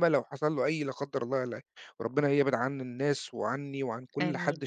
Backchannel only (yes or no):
yes